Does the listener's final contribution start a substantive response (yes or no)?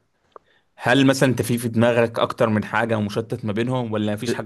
no